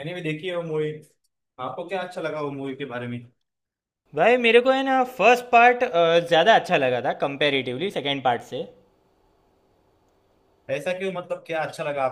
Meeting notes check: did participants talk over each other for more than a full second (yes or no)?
no